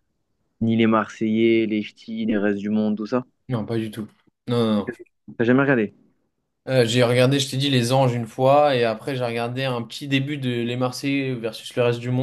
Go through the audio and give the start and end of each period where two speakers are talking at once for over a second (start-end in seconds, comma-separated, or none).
none